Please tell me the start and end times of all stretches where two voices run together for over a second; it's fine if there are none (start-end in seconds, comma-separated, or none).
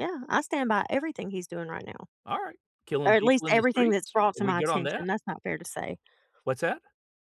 3.1-5.1